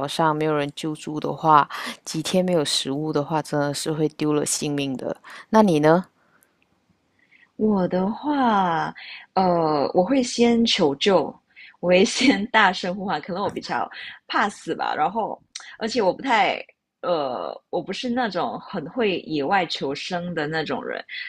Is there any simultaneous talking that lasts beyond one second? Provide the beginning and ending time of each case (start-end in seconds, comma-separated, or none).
none